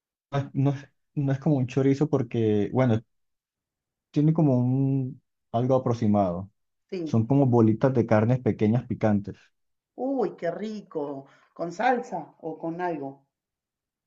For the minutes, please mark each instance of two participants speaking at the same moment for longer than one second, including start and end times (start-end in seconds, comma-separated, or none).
none